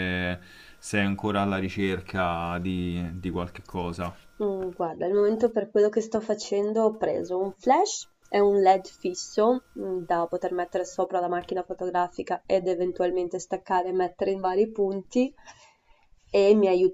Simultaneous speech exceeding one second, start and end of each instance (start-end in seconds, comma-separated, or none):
none